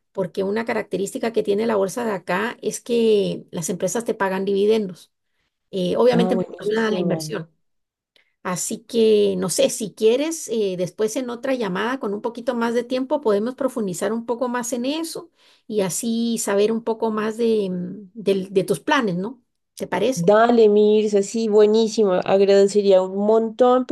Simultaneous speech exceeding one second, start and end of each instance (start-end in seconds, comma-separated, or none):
6.1-7.3